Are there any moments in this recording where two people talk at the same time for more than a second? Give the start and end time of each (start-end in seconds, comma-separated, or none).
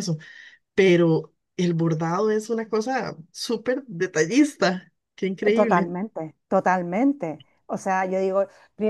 none